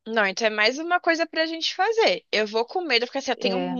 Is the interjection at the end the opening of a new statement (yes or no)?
no